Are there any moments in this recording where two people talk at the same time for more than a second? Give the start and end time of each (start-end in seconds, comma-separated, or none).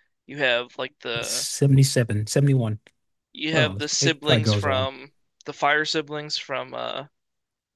3.5-4.9